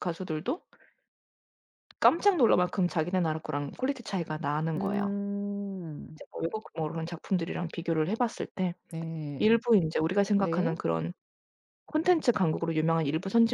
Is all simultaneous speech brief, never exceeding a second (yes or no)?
yes